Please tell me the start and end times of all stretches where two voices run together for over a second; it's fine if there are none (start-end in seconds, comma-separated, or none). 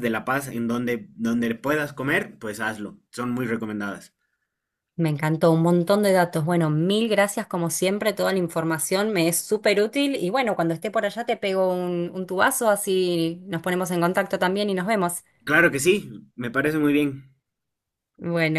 none